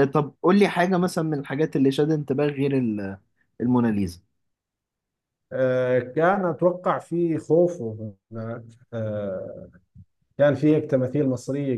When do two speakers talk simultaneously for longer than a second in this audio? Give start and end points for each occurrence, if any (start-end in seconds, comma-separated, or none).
none